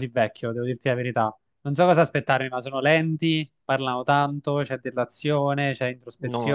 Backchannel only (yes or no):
no